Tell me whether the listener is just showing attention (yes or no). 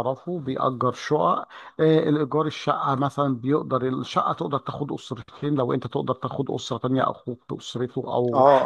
no